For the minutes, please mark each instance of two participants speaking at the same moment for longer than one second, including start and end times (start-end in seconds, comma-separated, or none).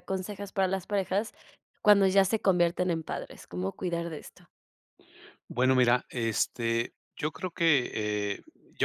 none